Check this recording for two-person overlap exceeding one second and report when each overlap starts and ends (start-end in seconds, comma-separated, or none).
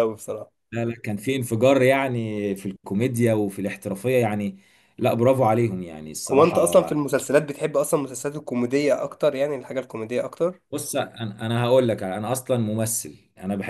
none